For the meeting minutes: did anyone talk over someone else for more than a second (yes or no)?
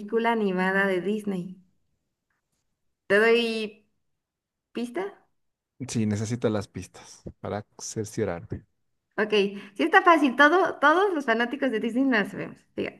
no